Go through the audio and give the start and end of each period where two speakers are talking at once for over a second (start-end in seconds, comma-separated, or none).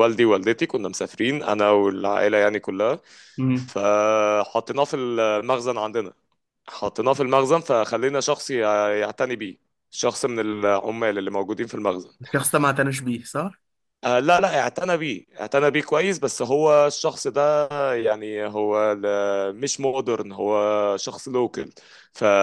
none